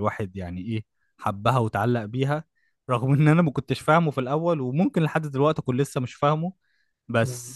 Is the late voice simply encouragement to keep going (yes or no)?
yes